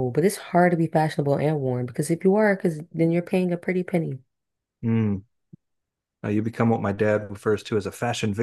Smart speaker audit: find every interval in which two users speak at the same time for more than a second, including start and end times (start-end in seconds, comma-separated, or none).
none